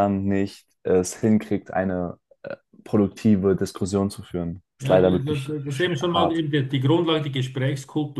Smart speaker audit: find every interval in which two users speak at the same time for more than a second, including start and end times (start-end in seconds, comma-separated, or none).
4.8-6.4